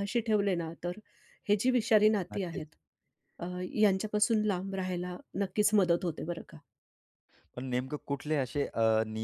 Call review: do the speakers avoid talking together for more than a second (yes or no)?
yes